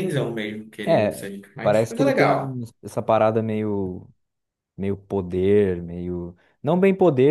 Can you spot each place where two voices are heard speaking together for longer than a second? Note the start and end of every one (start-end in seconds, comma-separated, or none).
0.8-2.6